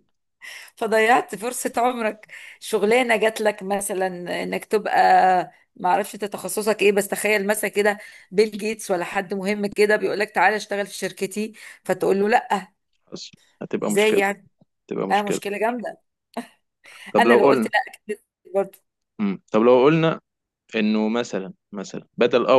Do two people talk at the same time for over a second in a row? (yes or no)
no